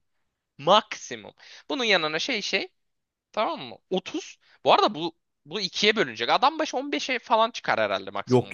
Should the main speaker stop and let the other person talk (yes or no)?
yes